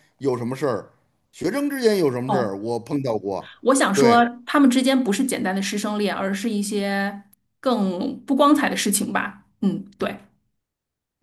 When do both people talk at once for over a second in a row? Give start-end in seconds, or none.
none